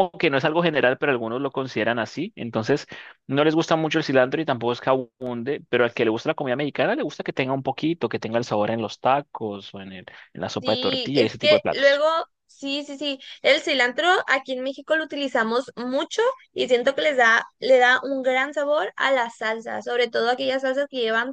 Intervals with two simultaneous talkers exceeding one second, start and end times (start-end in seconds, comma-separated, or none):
10.6-12.0